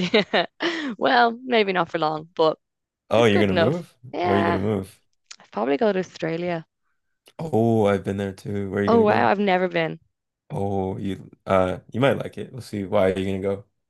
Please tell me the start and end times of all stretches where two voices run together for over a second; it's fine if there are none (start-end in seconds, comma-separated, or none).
3.2-4.6